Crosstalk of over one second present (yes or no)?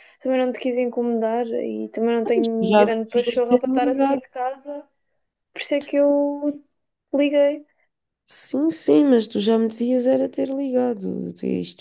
yes